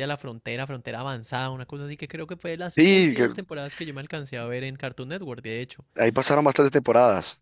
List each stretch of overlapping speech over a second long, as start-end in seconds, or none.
none